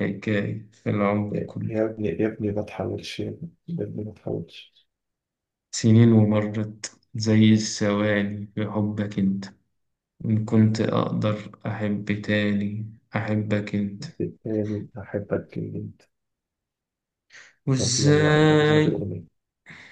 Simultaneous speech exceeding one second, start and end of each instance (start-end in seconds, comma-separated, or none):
17.8-19.1